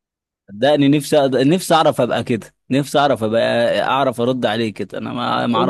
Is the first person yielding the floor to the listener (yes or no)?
yes